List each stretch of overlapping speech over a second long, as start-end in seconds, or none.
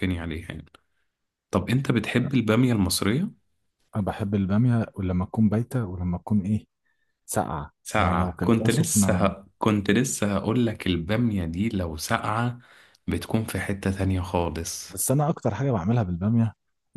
7.8-9.3